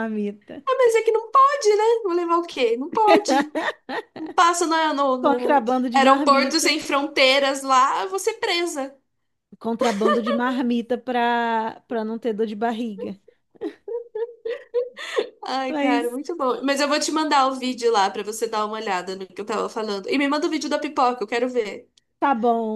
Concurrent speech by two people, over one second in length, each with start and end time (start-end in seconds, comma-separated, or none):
5.2-6.8